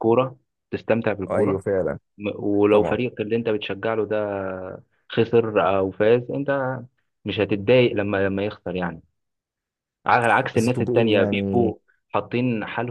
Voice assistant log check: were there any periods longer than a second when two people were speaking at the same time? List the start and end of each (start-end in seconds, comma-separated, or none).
10.5-11.7